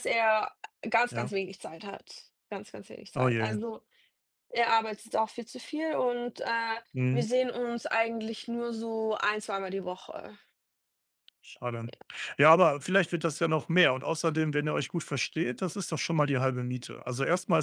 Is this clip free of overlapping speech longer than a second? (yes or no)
yes